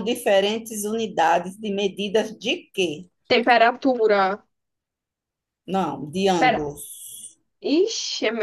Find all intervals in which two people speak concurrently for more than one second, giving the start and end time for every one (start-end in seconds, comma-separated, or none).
none